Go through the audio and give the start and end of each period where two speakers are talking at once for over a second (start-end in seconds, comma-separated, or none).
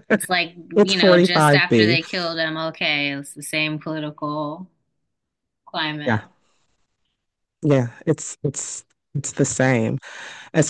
0.7-2.0